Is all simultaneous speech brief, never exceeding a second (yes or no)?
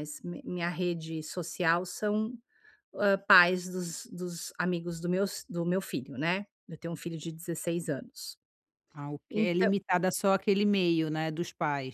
yes